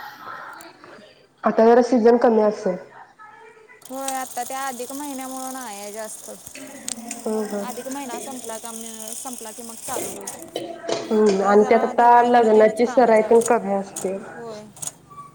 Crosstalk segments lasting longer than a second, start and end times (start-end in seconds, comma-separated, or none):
11.3-13.4